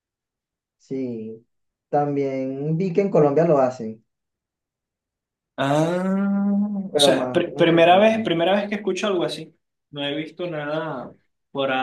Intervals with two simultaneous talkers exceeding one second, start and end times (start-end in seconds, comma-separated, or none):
6.9-8.3